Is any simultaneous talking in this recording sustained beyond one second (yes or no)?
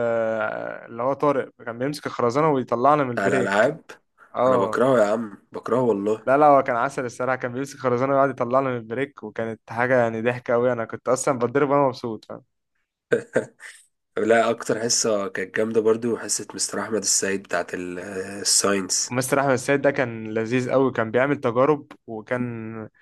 no